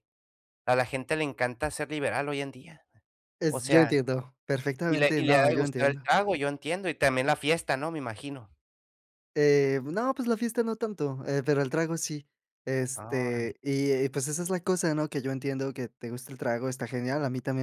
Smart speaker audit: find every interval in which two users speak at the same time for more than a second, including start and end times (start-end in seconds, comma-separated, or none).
4.9-6.1